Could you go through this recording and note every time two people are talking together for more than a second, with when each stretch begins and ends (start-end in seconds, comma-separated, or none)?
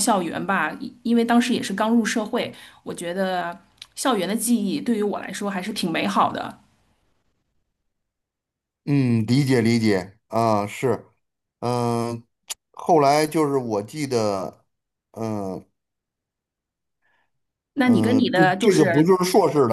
17.8-19.1